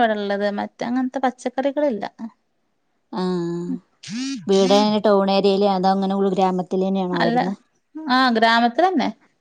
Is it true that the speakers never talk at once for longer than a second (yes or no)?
yes